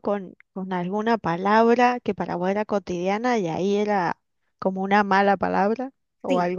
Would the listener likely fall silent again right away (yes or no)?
no